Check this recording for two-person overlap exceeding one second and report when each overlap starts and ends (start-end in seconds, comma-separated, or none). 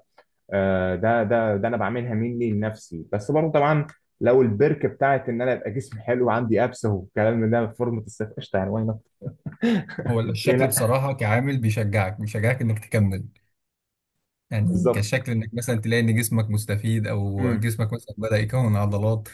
none